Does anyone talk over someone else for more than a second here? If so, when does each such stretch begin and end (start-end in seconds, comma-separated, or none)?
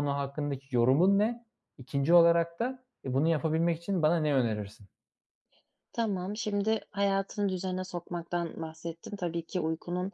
none